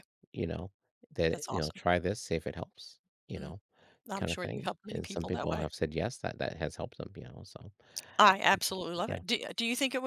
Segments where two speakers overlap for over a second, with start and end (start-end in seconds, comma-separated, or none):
4.2-5.7